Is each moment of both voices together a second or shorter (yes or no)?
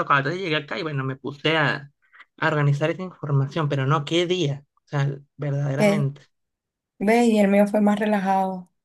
yes